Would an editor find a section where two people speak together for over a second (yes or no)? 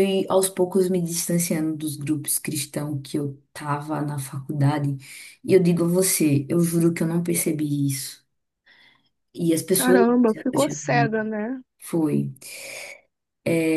yes